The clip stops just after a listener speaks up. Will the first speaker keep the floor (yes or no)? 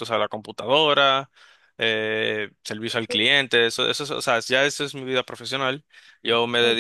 yes